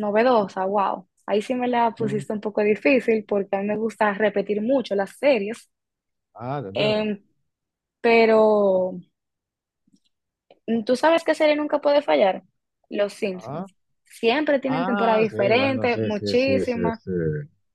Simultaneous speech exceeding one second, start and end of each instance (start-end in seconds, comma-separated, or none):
14.7-17.0